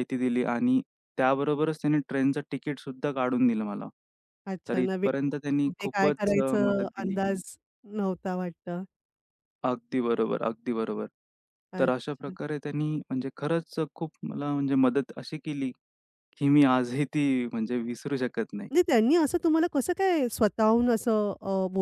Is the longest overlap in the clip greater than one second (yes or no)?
yes